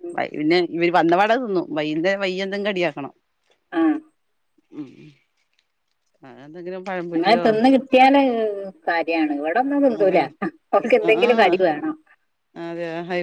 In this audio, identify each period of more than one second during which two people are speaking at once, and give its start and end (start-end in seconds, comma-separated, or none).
none